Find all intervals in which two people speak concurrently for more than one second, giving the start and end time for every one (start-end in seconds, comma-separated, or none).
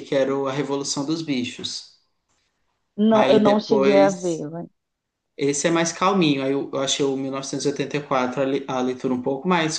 3.1-4.5